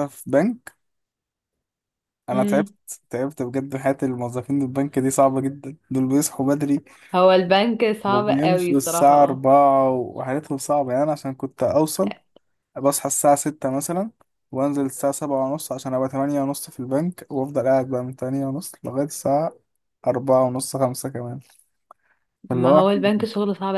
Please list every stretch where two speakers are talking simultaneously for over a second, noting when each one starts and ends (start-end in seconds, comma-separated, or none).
8.1-9.4